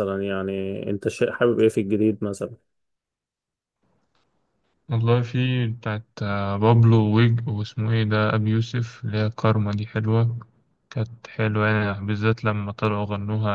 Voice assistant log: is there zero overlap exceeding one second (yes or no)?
yes